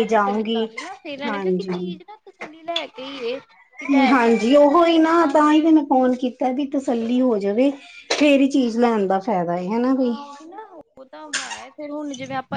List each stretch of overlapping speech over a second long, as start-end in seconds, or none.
4.1-5.7